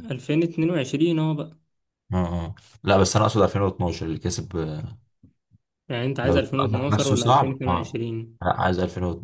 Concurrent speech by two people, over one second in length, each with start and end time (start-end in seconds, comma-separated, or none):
6.2-8.0